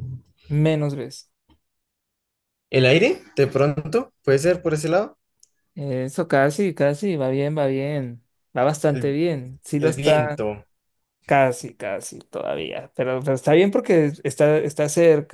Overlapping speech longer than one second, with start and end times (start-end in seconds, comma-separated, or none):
none